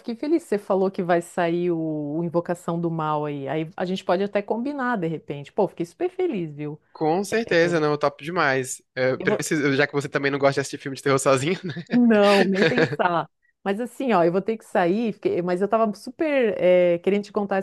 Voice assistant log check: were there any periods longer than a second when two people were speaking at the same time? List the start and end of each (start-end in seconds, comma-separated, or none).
none